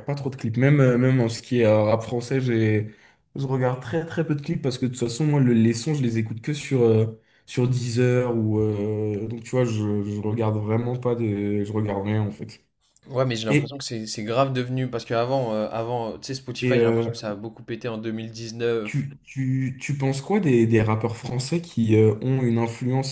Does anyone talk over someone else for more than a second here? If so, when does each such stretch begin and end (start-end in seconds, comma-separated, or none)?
none